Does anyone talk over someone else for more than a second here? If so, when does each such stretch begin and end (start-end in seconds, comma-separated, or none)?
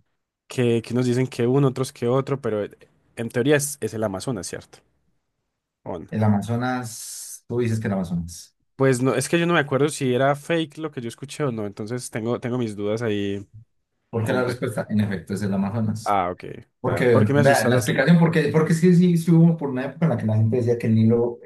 16.8-18.1